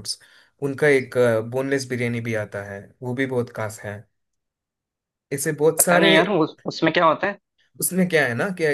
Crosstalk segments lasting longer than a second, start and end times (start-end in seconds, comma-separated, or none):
none